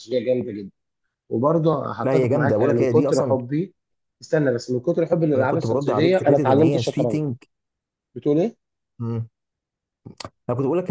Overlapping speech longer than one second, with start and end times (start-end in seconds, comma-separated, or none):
2.0-3.4, 5.3-7.2